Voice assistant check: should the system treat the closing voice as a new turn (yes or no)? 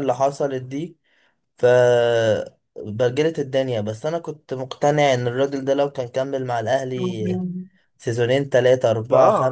yes